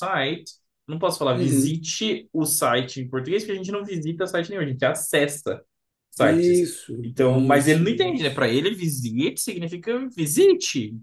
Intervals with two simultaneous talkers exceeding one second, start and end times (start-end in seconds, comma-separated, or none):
6.2-8.5